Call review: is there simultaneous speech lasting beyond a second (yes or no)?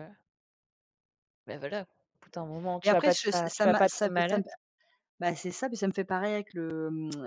yes